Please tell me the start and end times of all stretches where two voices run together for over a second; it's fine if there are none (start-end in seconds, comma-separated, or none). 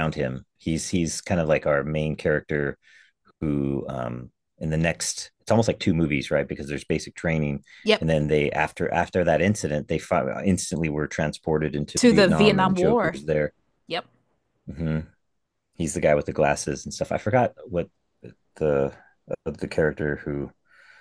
12.0-13.2